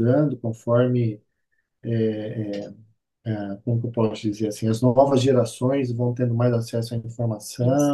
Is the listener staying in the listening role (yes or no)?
yes